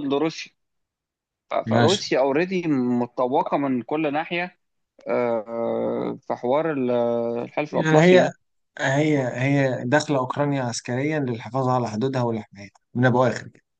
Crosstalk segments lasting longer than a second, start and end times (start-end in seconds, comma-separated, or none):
none